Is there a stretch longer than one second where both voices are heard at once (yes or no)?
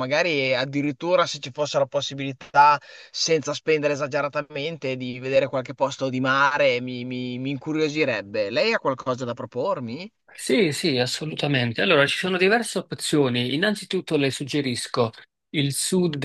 no